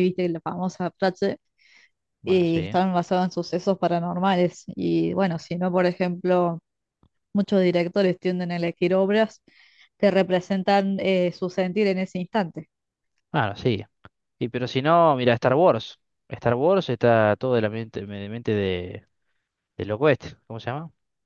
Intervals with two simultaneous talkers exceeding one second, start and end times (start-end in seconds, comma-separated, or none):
none